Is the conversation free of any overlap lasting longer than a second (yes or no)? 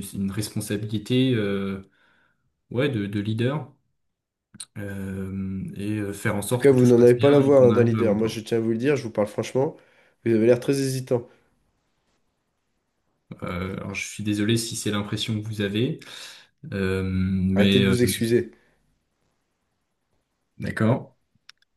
no